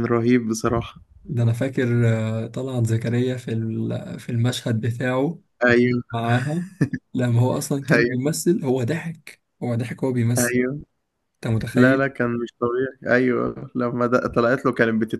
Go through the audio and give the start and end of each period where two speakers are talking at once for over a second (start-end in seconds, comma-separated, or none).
none